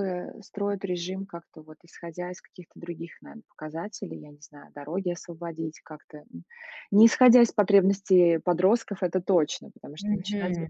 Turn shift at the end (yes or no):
yes